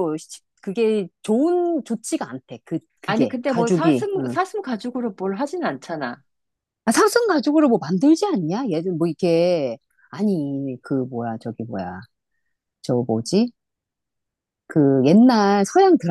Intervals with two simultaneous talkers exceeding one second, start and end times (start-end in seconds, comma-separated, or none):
3.1-4.4